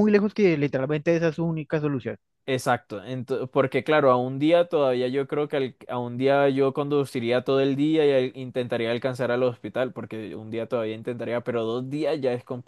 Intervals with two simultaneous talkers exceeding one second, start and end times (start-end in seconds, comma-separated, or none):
none